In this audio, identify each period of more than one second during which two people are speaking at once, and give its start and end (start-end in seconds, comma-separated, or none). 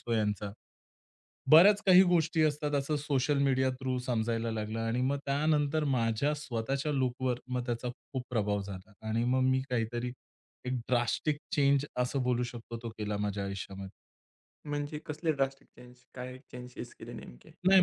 none